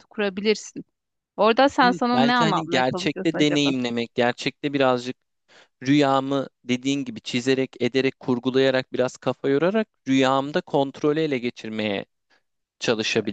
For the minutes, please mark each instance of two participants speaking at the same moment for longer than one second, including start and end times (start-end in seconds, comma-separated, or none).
1.8-3.7